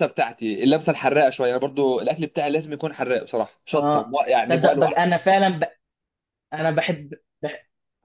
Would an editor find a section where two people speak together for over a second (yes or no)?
yes